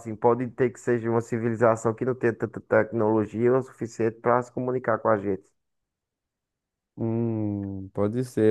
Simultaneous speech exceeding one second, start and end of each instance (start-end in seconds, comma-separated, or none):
none